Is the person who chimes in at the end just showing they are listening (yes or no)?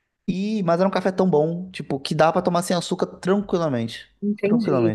no